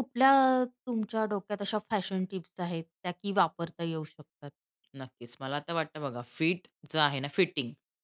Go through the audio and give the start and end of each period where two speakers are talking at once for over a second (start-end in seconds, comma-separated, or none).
none